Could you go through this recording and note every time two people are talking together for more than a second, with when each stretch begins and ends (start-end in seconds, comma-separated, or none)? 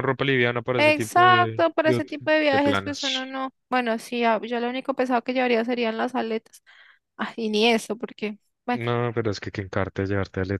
0.8-3.3